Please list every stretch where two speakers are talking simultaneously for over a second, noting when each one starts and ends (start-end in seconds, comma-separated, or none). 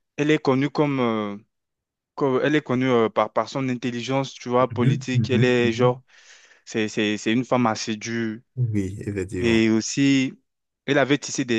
4.7-6.0